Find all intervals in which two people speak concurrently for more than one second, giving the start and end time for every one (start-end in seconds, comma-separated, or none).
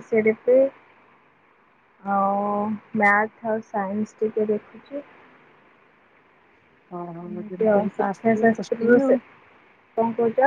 7.3-9.1